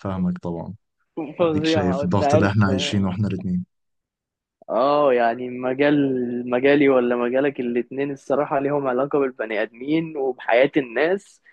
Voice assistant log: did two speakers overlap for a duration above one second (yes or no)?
yes